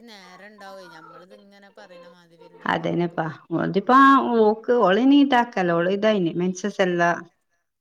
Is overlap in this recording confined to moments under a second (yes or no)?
yes